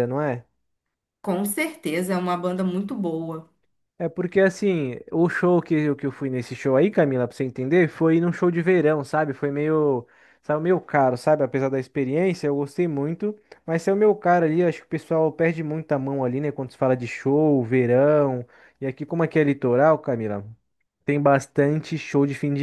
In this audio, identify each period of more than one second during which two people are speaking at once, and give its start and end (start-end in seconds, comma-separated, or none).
none